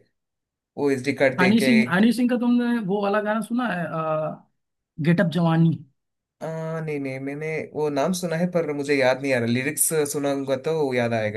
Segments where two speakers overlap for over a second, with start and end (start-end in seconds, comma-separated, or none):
none